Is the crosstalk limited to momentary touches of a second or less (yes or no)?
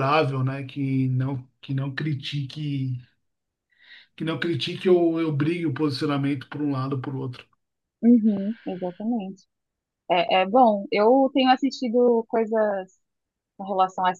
yes